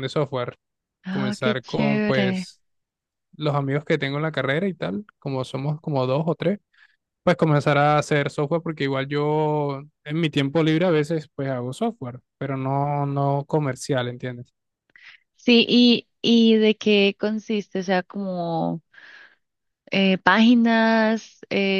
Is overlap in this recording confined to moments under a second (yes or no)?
no